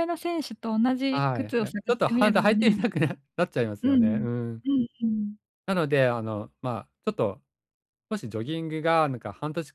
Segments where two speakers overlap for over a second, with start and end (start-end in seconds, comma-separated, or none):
1.1-2.8